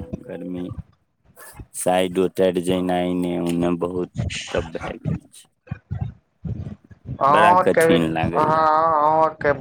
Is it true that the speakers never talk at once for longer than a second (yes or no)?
no